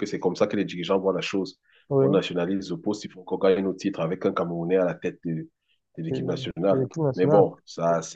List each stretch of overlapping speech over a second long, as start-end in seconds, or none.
6.1-7.4